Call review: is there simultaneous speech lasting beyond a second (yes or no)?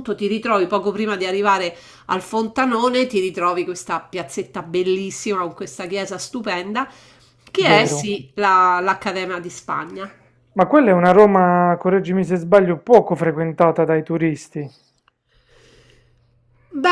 no